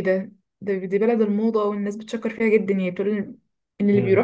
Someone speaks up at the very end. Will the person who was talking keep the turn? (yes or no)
no